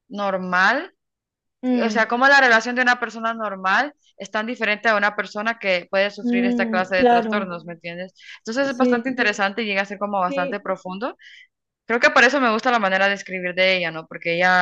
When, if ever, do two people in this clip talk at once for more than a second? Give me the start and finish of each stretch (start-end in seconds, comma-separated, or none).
6.2-7.5